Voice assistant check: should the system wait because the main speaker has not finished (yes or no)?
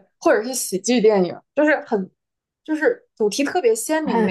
no